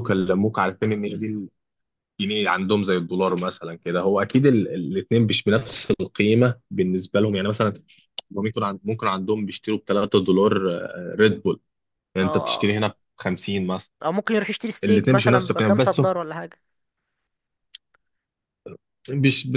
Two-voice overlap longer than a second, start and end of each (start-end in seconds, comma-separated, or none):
14.8-16.1